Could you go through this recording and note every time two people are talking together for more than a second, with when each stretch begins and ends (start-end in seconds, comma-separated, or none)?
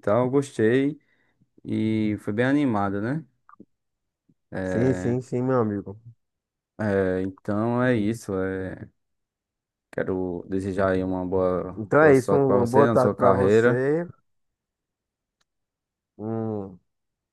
11.8-13.8